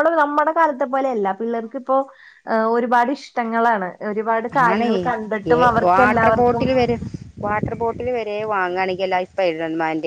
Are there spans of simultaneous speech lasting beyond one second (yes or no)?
no